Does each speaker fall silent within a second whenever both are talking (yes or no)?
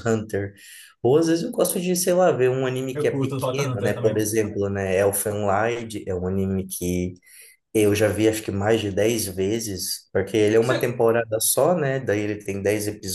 no